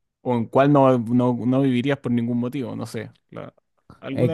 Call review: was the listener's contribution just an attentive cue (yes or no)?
no